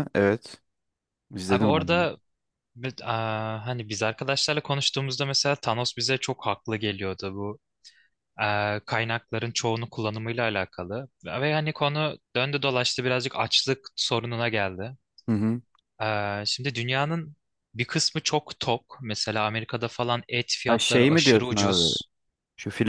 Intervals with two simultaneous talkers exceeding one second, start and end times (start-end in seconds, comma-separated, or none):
20.7-21.9